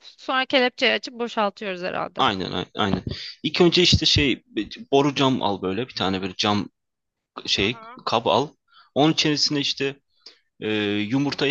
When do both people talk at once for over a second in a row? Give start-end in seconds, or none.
none